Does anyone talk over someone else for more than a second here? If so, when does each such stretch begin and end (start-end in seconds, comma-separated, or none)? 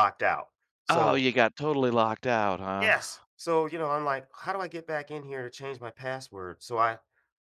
none